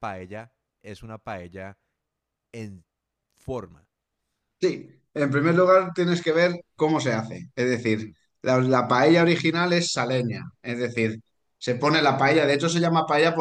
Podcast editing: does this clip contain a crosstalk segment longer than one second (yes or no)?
no